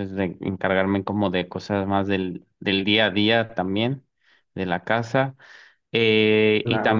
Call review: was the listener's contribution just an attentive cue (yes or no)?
yes